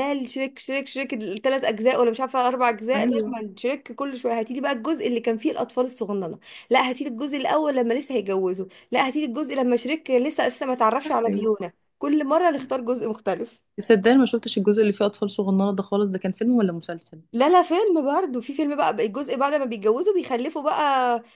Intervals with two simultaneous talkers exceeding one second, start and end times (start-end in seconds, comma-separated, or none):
none